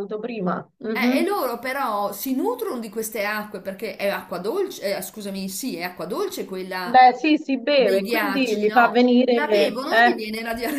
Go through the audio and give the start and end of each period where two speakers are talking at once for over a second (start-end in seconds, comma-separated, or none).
7.7-10.2